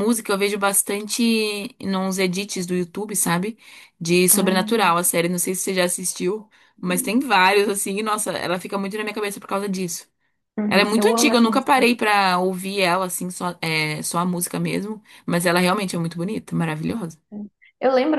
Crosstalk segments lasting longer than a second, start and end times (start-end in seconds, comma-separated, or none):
10.7-11.9